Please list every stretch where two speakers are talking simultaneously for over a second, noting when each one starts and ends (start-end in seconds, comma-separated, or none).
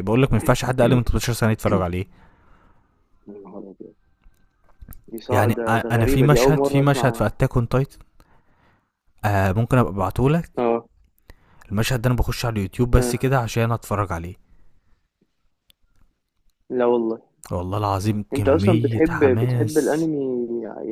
5.3-7.2, 18.3-20.1